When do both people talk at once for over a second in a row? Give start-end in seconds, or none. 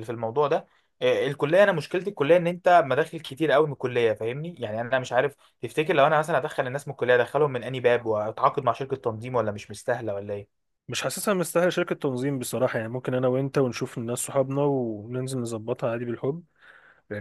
none